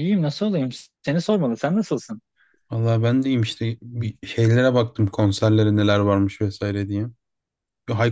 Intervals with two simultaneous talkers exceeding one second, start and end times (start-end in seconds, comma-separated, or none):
none